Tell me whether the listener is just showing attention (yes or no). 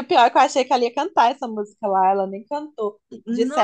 yes